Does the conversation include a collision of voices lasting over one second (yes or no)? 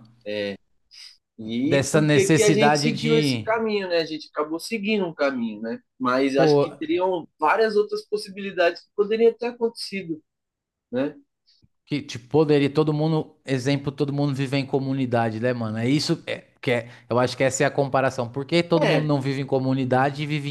yes